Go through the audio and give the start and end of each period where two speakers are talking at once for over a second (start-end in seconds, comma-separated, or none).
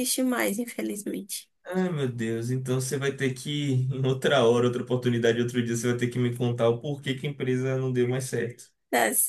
none